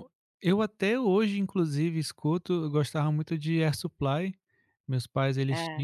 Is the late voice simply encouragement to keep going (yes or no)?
yes